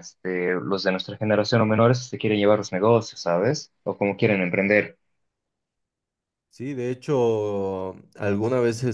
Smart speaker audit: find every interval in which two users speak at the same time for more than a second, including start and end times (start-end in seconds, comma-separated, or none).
none